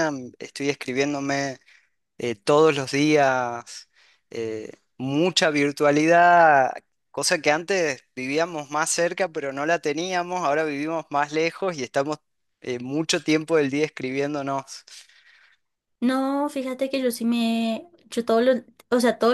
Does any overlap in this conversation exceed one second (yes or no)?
no